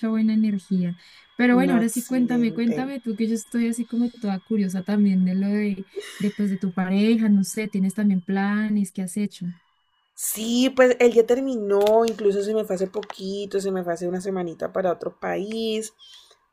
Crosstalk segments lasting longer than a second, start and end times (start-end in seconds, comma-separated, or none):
1.6-2.9